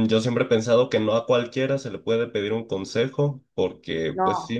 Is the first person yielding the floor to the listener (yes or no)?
no